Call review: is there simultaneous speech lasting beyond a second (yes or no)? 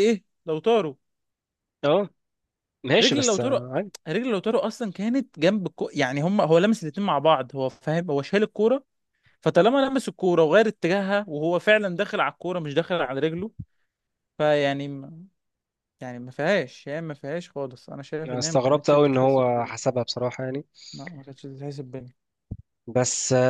yes